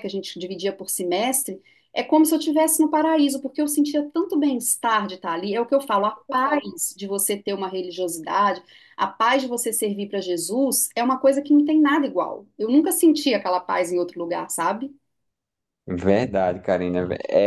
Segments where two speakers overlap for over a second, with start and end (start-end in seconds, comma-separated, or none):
none